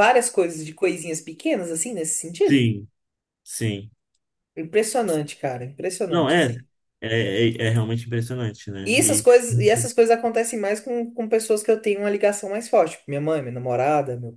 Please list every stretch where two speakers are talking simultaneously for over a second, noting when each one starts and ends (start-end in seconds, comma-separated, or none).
none